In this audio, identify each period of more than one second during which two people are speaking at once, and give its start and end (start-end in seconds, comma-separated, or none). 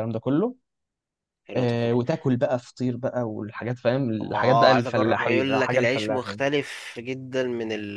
4.2-6.4